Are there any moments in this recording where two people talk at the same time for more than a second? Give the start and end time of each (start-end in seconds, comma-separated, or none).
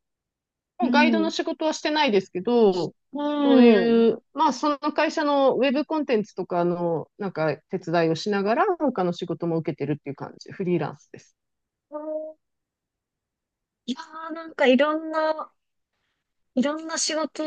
none